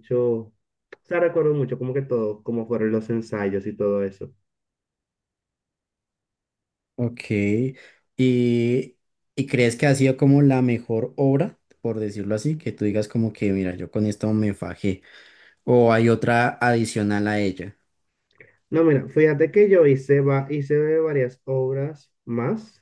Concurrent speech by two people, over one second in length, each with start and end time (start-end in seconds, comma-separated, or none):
none